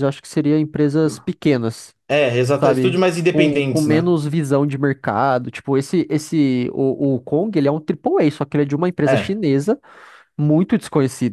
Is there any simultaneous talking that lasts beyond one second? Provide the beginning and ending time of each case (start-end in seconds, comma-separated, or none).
2.5-4.1